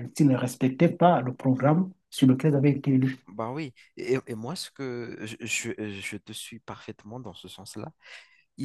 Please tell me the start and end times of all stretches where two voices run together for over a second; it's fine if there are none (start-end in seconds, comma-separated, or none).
none